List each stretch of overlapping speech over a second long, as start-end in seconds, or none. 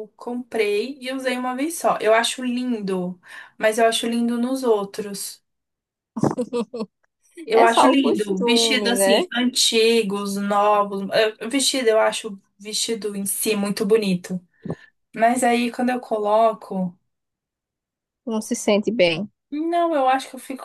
7.5-9.3